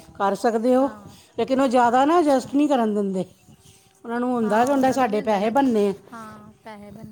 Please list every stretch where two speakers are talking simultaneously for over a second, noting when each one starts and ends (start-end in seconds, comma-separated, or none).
4.4-5.8